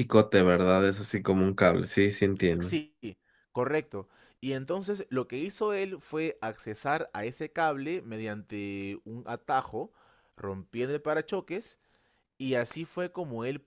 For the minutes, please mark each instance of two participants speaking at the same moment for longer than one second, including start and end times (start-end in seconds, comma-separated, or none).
none